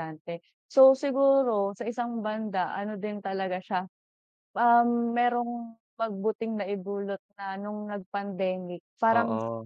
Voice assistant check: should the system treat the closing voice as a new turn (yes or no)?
no